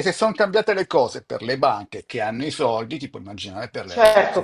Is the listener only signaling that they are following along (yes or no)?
no